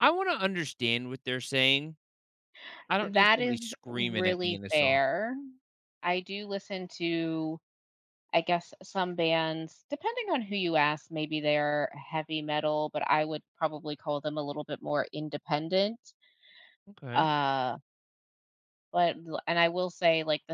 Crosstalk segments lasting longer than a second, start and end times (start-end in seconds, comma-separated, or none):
3.0-5.0